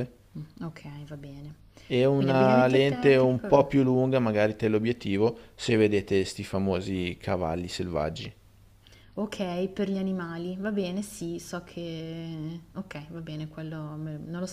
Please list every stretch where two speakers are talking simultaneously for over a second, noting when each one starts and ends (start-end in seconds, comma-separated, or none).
2.1-3.7